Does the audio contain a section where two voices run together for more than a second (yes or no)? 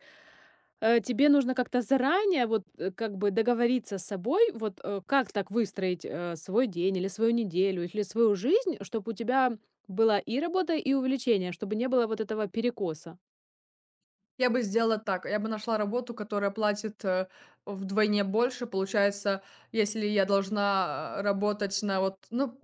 no